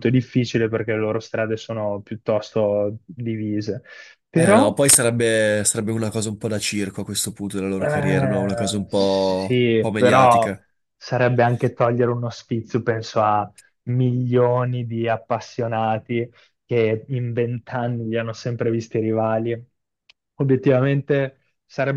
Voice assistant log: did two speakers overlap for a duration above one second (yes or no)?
yes